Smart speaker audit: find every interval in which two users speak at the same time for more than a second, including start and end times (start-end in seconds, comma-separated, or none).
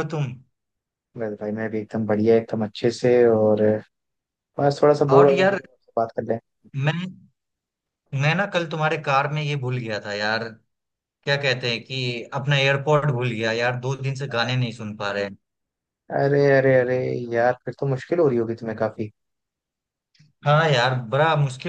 none